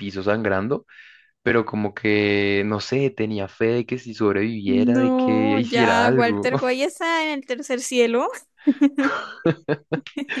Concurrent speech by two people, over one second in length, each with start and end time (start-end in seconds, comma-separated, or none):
4.6-6.5